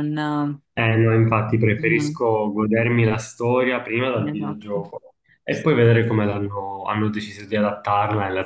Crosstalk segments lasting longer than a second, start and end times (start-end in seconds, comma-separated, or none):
none